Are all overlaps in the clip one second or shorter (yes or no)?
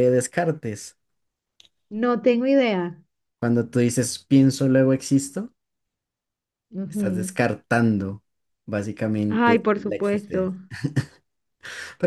no